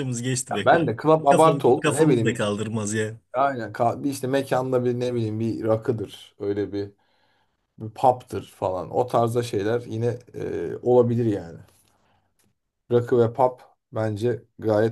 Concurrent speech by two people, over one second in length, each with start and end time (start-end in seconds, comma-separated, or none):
0.5-2.5